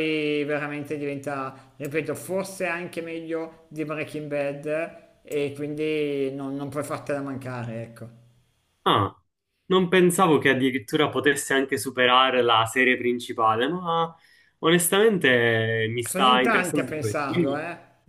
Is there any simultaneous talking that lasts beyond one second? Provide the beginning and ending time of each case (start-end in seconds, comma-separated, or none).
16.0-17.6